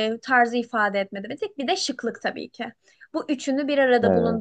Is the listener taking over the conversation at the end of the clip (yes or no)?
no